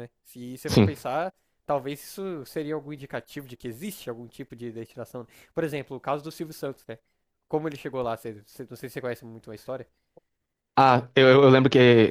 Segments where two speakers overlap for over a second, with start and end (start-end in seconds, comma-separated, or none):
none